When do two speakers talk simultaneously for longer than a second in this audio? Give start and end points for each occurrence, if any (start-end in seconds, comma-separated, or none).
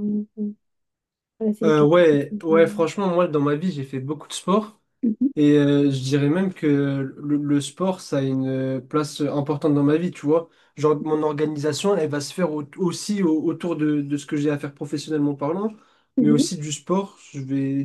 1.6-2.9